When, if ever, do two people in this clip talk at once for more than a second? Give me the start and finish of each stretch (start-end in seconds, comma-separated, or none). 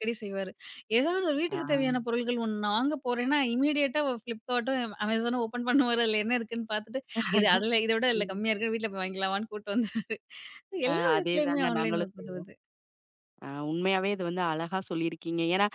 10.9-12.5